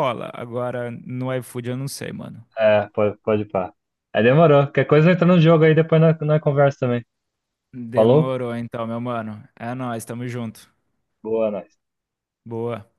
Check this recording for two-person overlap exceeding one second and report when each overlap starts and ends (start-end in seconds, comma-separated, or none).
none